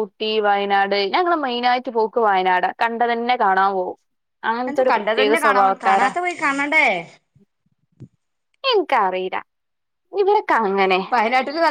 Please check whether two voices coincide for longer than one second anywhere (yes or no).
yes